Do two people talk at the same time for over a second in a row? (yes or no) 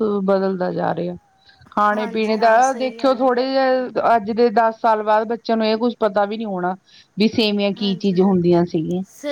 yes